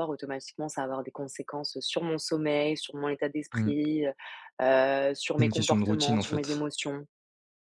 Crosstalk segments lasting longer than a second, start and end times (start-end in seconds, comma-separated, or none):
5.4-6.7